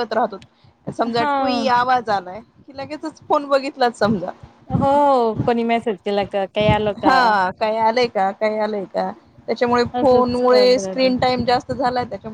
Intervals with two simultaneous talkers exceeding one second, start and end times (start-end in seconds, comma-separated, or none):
10.0-11.3